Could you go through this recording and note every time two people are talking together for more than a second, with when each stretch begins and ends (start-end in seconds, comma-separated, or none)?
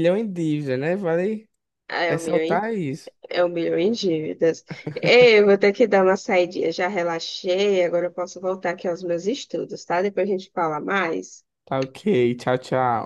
none